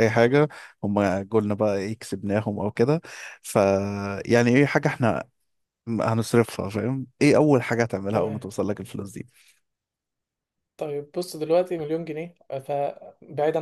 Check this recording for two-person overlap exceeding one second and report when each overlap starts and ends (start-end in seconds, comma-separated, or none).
none